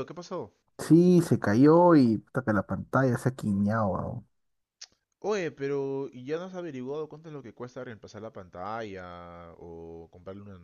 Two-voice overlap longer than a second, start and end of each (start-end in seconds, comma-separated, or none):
none